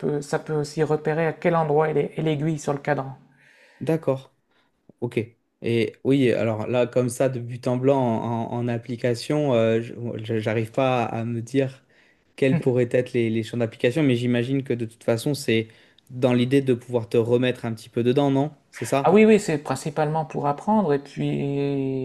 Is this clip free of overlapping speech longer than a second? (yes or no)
yes